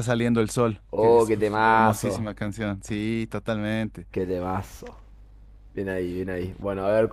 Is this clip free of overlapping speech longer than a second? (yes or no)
no